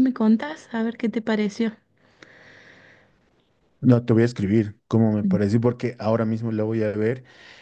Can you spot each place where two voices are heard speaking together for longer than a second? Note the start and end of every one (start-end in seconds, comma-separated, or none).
none